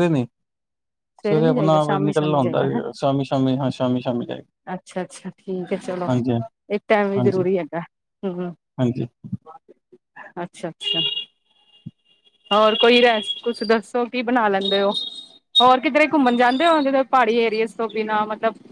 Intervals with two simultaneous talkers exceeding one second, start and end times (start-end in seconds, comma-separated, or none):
1.2-2.6